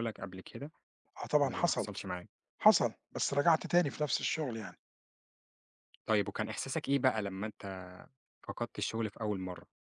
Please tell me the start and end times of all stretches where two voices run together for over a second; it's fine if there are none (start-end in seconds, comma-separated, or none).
none